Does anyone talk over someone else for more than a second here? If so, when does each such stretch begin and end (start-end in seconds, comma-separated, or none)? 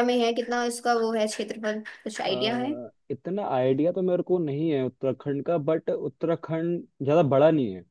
none